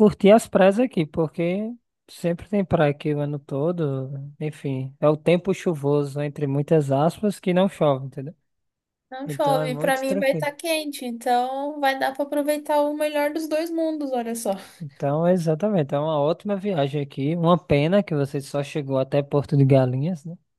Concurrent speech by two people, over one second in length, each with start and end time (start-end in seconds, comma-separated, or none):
9.2-10.5